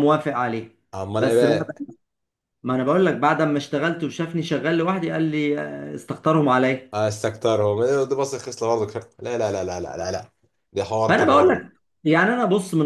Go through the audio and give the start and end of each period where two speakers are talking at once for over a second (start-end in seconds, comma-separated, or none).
none